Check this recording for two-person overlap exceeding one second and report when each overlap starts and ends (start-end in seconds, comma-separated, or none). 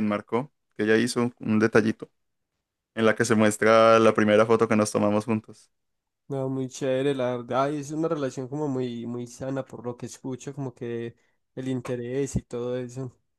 none